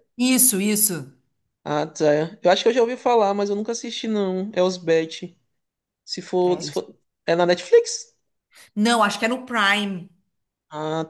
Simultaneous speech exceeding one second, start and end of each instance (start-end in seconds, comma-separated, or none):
none